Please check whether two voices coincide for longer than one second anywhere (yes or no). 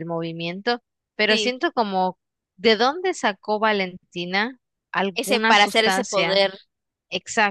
yes